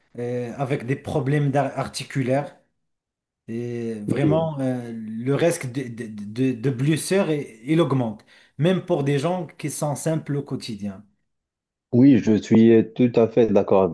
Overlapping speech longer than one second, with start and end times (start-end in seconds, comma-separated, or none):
none